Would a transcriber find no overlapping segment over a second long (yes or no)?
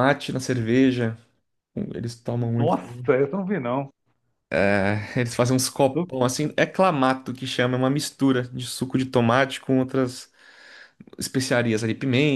yes